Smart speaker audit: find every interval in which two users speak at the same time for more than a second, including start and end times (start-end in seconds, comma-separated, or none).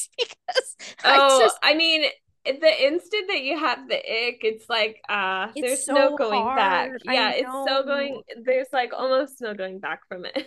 5.5-8.2